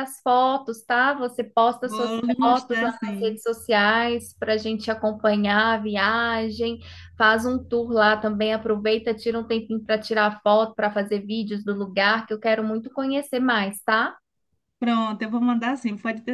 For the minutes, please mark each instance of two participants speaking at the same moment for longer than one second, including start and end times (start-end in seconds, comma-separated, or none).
1.8-3.4